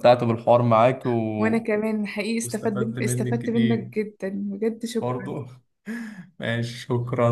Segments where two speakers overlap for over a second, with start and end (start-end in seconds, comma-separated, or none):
2.4-3.9